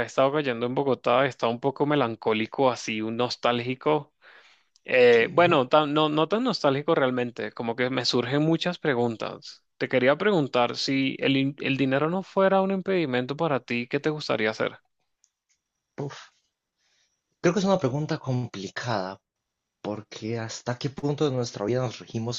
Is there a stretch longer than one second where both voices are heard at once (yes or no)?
no